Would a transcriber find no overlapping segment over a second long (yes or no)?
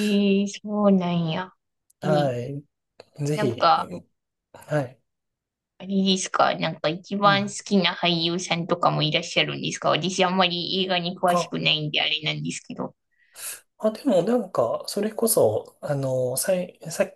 yes